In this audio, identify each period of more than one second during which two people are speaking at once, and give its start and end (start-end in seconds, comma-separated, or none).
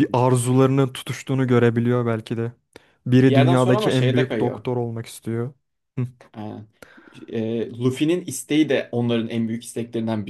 3.2-4.7